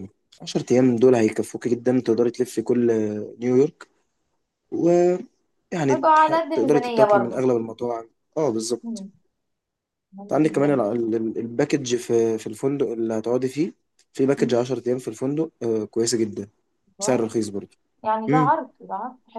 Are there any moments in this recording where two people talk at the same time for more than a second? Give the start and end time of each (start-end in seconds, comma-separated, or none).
5.9-7.5